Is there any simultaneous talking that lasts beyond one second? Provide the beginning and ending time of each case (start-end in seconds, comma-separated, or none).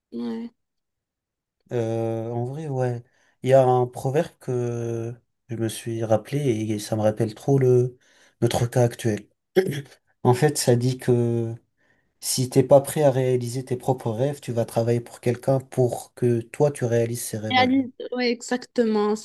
none